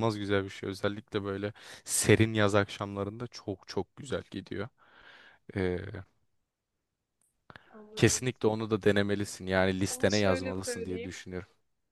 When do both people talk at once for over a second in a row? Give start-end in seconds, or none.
9.9-11.2